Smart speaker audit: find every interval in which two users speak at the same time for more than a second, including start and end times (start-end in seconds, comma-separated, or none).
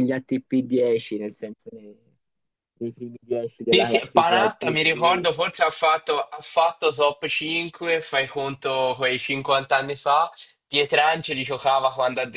3.7-5.3